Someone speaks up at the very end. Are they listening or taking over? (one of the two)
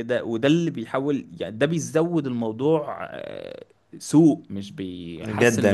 taking over